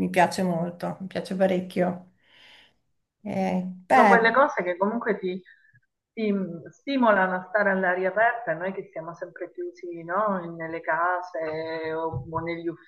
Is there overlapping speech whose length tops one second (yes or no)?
no